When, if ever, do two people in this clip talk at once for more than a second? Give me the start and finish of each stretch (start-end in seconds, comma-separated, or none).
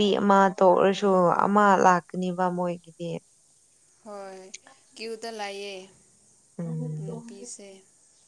none